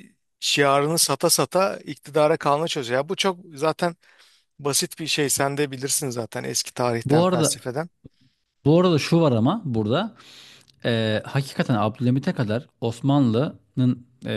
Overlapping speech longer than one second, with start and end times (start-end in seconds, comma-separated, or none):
none